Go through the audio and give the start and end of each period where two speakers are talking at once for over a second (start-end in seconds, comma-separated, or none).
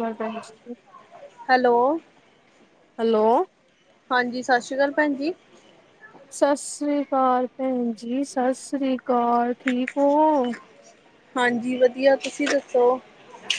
none